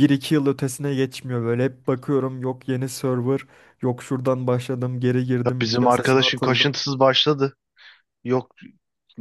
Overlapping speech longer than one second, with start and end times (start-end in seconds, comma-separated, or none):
5.5-6.8